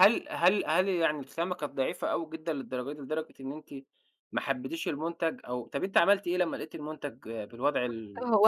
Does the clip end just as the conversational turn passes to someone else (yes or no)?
yes